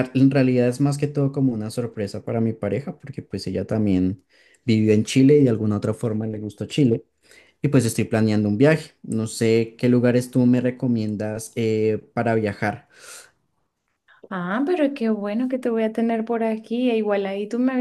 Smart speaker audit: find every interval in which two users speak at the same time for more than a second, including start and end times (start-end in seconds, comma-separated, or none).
none